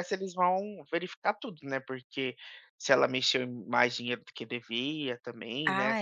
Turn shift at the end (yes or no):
yes